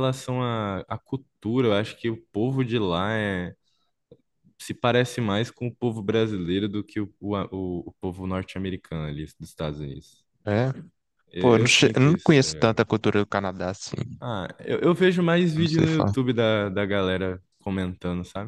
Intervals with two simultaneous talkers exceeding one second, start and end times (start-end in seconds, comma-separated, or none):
11.4-12.8